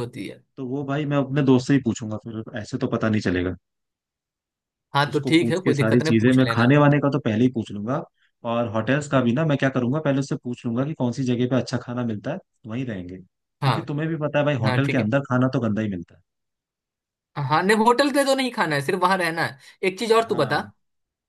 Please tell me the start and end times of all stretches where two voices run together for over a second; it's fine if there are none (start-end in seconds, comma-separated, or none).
5.1-6.8